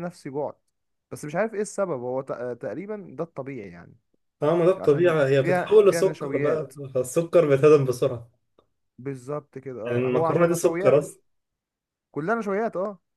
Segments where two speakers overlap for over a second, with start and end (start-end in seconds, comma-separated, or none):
4.8-6.7, 9.8-11.1